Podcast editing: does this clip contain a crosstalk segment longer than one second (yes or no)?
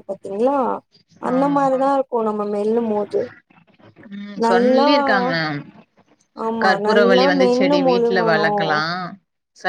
yes